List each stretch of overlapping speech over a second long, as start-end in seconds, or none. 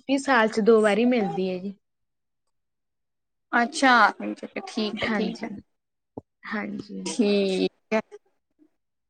none